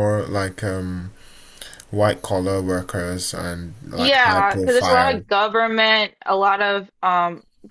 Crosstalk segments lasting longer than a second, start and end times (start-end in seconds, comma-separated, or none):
3.9-5.2